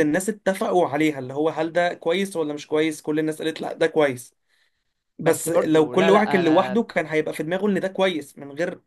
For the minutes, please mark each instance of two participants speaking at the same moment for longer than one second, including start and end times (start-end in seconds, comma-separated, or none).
5.2-6.8